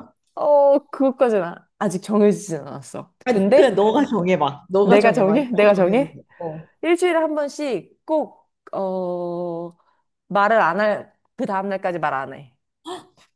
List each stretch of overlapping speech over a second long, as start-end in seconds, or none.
4.8-6.2